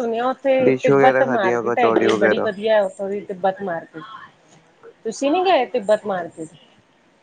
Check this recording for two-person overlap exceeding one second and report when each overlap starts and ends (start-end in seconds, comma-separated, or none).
0.6-2.5